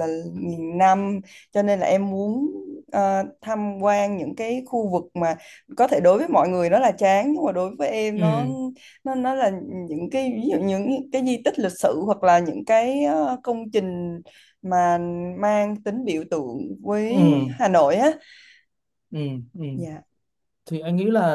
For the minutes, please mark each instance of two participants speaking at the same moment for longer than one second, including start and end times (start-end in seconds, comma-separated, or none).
none